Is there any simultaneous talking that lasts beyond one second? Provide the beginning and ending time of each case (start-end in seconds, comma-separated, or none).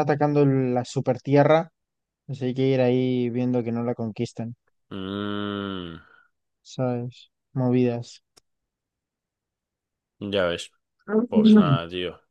none